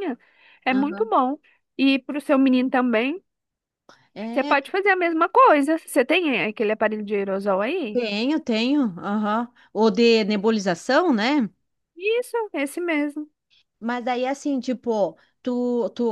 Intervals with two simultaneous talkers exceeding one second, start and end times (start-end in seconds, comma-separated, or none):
none